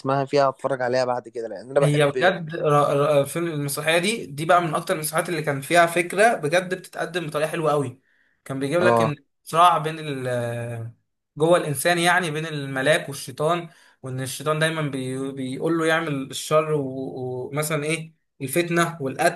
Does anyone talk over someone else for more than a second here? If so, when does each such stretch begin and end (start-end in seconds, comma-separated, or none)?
none